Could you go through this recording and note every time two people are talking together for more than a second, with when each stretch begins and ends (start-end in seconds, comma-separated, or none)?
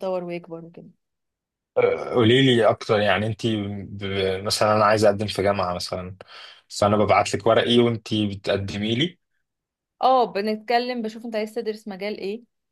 none